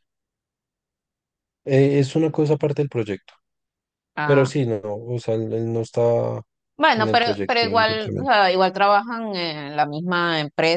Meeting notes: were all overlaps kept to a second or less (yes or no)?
no